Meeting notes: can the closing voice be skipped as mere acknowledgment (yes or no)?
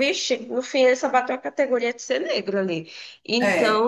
yes